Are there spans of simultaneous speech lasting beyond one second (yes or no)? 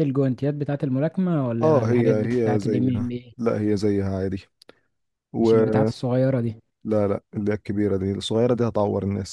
yes